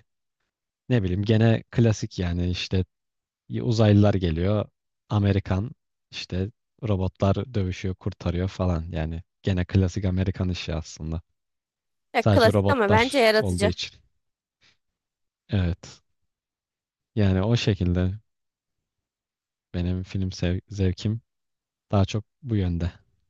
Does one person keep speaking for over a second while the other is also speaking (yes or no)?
yes